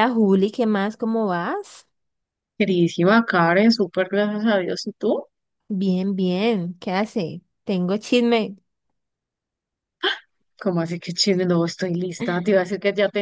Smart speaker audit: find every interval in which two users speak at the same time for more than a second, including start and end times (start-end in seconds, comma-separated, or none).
none